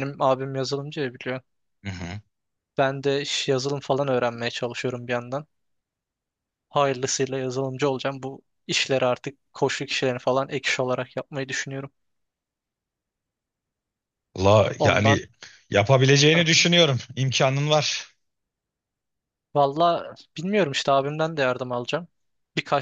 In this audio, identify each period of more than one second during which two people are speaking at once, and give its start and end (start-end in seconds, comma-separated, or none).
none